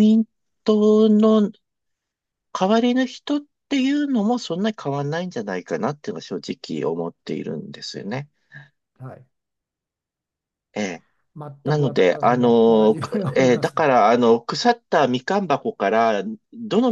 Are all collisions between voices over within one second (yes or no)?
no